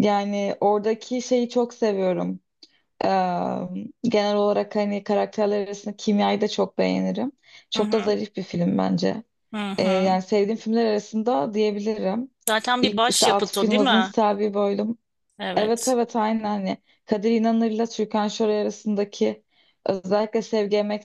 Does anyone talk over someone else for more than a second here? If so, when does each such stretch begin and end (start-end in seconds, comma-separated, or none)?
12.8-14.1